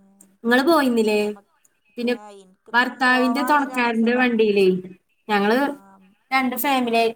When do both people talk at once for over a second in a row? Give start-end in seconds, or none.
2.7-4.2